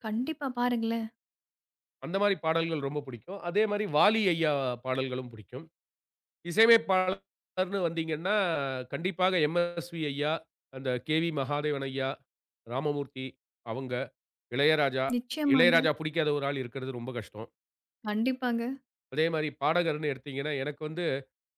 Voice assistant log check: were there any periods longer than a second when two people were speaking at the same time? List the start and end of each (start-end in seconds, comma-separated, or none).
none